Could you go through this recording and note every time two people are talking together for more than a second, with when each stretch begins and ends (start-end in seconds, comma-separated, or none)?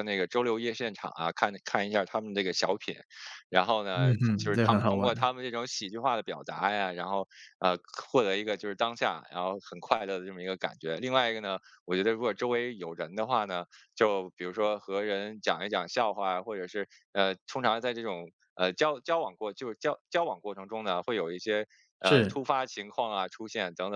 3.9-5.3